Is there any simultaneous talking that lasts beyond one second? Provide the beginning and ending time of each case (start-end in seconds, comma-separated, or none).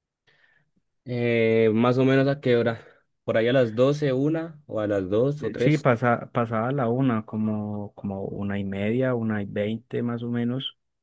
none